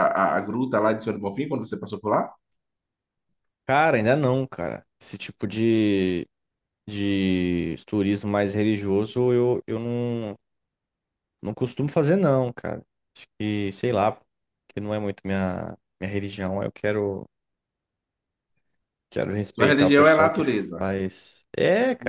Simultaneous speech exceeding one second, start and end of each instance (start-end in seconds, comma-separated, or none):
19.6-20.9